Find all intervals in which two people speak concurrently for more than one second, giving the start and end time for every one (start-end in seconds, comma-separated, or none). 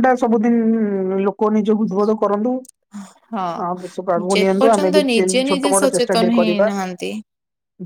4.3-6.7